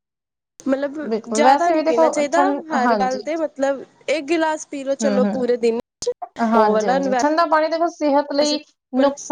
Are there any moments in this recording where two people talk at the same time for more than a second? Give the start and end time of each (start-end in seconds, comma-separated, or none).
1.4-3.2